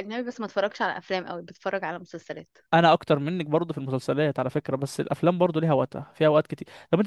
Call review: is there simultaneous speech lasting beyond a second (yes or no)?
no